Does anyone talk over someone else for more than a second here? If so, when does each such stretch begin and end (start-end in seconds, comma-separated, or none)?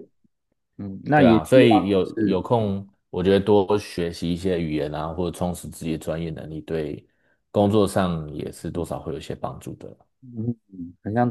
1.1-2.4